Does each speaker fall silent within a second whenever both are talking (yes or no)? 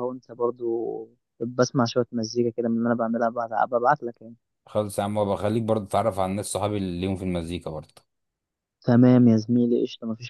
yes